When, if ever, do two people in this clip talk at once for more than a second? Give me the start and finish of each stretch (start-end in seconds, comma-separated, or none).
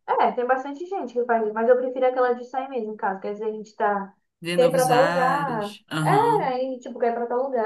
4.5-6.5